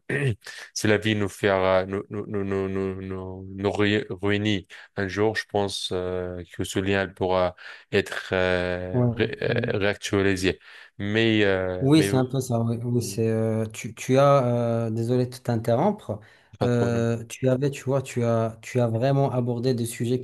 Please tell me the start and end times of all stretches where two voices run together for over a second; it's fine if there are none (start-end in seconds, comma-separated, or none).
none